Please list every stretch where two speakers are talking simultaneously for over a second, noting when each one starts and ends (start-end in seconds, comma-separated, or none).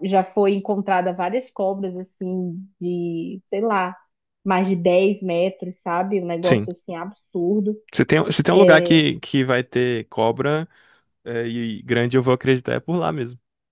none